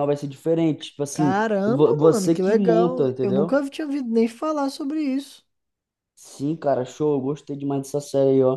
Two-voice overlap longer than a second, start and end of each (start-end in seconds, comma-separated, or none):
1.1-3.6